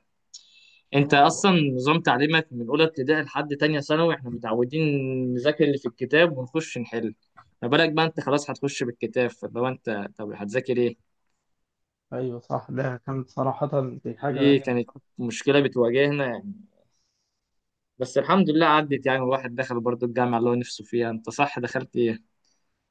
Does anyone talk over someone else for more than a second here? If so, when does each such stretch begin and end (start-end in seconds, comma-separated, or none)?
none